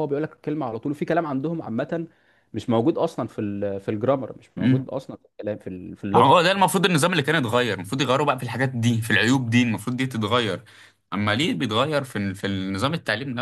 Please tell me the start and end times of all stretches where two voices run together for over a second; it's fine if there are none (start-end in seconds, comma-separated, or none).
none